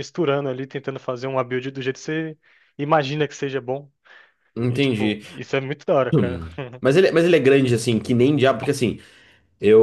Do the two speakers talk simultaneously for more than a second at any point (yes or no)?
no